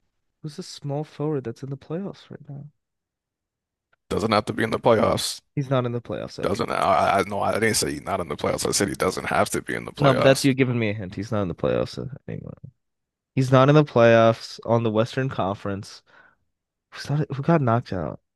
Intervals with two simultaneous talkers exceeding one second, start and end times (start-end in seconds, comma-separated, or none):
none